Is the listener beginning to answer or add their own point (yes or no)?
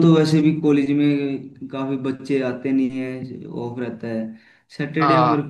no